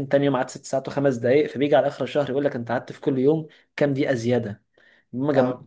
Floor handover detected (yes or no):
no